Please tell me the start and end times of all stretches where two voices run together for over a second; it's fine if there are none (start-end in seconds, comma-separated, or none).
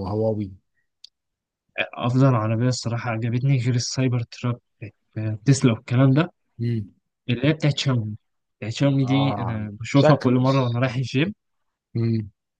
9.0-10.4